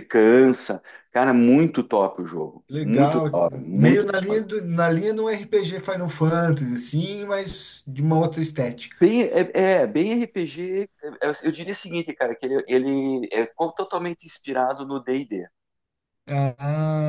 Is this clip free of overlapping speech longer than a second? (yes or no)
no